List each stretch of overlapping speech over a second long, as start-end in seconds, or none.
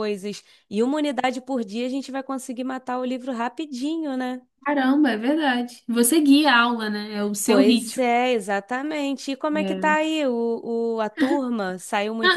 none